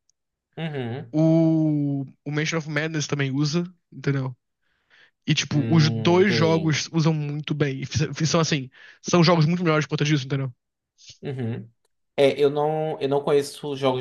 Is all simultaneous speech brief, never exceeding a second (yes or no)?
no